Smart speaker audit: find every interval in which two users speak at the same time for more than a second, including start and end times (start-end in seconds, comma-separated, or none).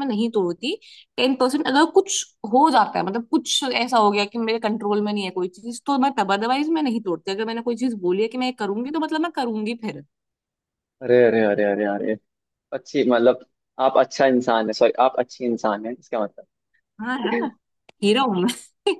none